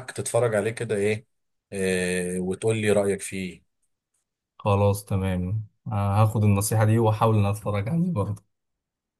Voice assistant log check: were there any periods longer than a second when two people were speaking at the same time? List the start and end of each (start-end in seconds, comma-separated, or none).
none